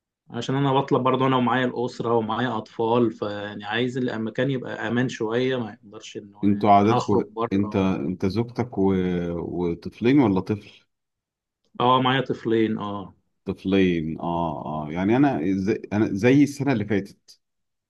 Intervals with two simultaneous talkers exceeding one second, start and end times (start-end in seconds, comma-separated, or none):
6.4-7.8